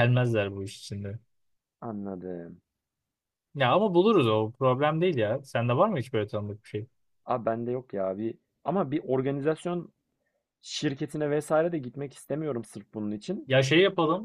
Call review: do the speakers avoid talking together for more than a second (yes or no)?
yes